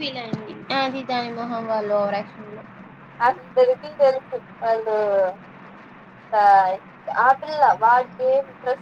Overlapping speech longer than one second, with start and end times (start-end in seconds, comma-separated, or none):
none